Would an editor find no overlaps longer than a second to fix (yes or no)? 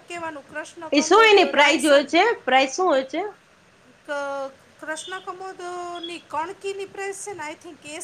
yes